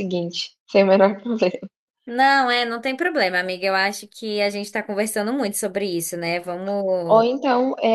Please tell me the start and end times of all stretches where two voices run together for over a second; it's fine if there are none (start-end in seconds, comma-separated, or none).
none